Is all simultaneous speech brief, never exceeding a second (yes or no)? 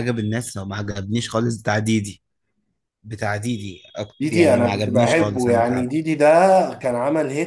no